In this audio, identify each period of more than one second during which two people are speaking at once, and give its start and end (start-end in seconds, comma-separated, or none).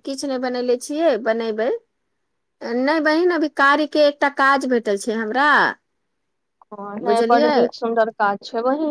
none